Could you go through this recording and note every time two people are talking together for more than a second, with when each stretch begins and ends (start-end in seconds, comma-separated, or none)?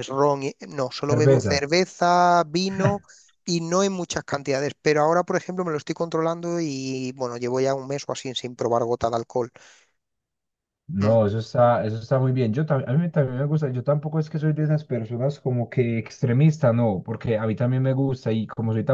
none